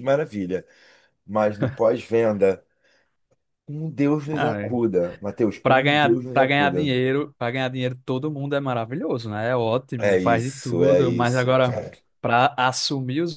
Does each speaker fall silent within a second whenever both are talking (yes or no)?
no